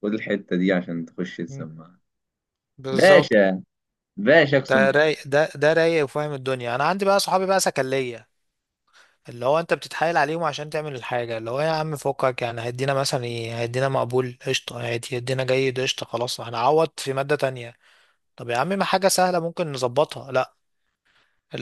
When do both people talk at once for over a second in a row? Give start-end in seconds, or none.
none